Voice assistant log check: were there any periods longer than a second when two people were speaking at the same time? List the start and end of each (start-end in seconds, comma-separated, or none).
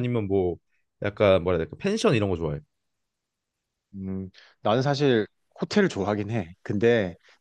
none